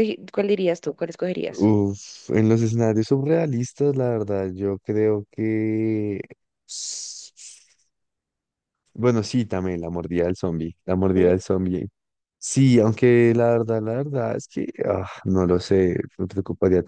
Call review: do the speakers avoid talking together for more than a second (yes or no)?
yes